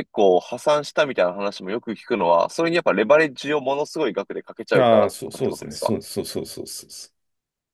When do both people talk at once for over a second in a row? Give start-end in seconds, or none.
4.7-5.9